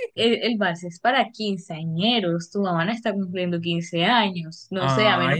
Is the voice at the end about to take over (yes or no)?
yes